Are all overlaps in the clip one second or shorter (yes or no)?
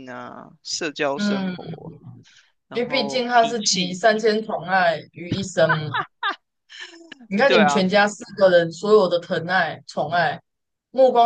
no